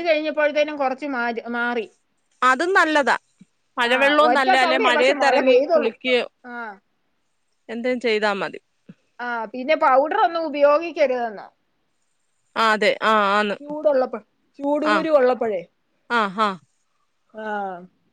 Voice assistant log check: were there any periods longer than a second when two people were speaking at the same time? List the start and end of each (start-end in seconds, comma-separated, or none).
3.9-5.9